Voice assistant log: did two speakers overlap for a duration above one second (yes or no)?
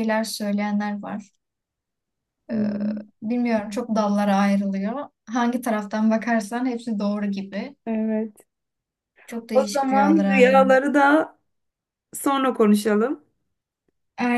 yes